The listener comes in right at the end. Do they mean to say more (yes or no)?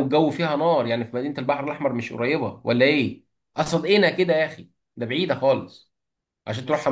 yes